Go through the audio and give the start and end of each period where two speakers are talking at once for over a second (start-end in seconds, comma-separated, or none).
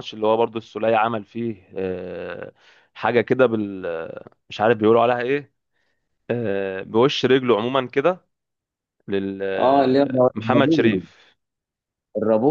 9.6-11.0